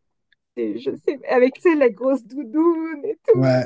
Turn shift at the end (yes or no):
yes